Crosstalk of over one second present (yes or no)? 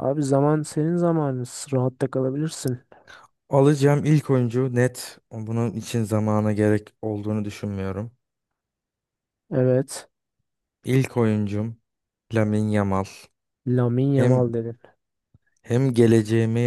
no